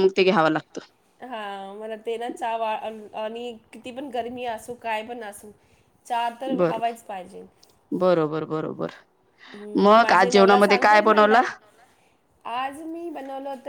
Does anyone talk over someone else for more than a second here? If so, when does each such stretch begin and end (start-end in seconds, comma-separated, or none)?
9.8-11.4